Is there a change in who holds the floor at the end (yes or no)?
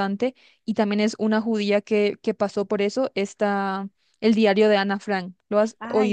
yes